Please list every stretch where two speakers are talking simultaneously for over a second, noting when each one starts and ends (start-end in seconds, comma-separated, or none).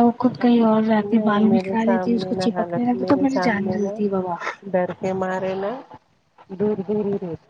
1.1-2.9